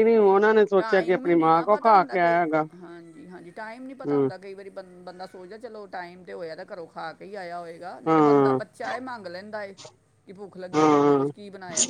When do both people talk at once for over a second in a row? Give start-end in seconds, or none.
0.8-2.4